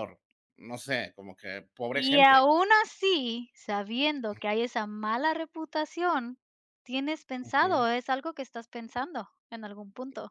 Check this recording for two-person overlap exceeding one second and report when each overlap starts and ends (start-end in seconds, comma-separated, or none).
none